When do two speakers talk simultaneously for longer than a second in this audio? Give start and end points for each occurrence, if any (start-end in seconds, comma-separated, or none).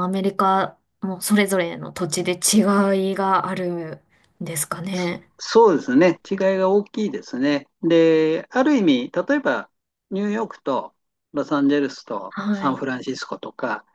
none